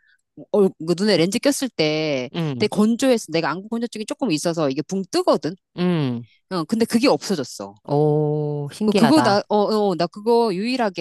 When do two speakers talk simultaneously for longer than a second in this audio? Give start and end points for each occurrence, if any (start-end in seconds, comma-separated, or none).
none